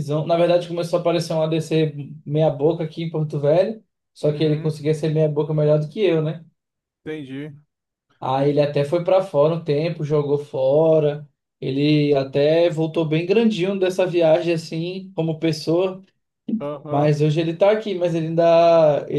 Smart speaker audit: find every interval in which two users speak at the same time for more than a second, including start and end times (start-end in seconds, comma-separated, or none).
none